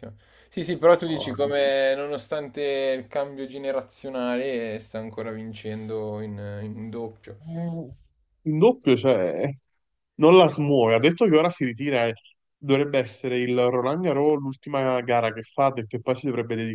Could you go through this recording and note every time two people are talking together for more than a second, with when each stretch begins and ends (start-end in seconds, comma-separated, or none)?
none